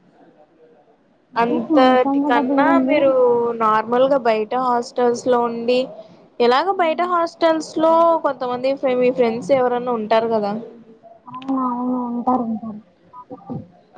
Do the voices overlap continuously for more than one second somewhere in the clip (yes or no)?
yes